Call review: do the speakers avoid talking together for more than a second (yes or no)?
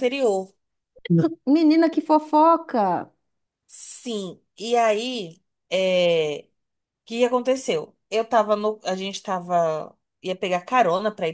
yes